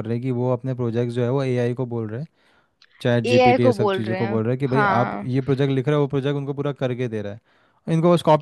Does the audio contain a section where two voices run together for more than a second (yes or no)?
yes